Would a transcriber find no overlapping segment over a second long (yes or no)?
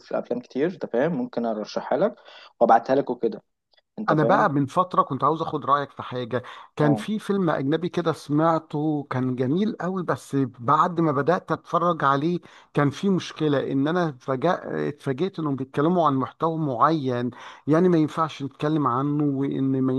yes